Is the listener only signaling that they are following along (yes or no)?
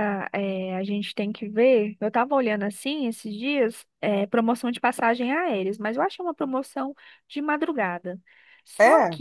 yes